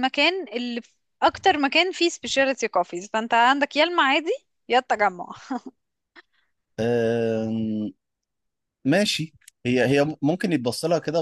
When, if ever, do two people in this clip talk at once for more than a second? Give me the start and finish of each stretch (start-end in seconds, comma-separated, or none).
none